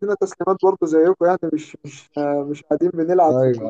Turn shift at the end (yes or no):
yes